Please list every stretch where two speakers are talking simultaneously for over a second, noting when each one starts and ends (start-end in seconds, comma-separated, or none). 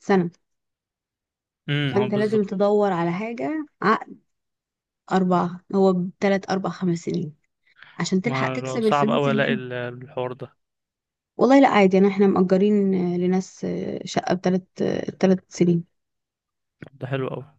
8.2-9.6